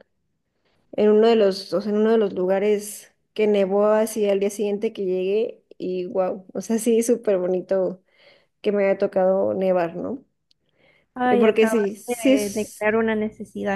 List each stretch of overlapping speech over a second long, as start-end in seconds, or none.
11.3-12.8